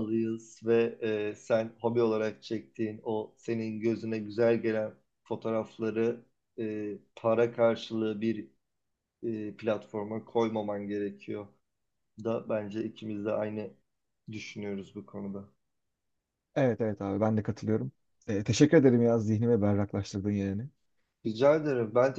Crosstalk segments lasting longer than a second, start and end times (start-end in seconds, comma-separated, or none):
none